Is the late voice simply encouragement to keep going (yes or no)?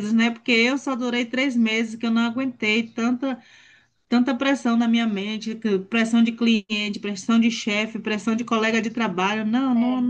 yes